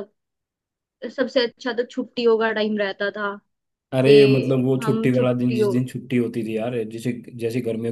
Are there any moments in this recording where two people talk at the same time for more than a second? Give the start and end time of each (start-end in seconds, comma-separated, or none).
4.0-5.7